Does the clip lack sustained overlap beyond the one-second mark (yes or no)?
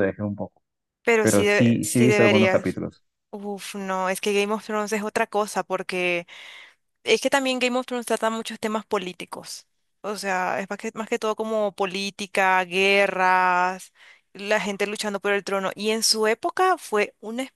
no